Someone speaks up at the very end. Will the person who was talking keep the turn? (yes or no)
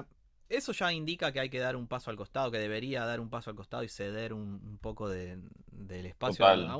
yes